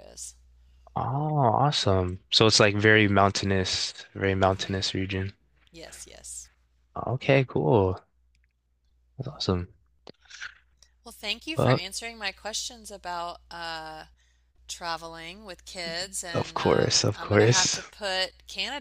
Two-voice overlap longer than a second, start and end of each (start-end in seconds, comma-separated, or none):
16.3-17.8